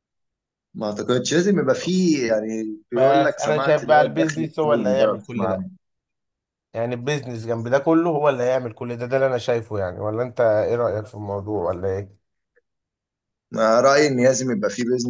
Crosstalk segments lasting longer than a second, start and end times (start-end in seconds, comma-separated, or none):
2.9-5.6